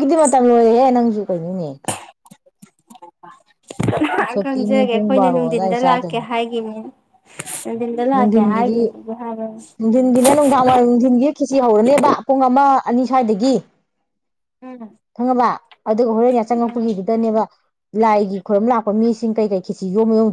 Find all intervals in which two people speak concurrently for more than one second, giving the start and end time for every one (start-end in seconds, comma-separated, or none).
4.4-5.8